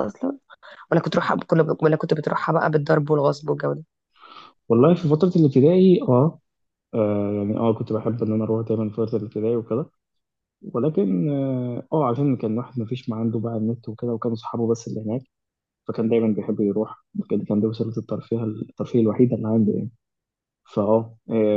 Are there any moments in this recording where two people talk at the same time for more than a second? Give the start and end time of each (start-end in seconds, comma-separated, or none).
none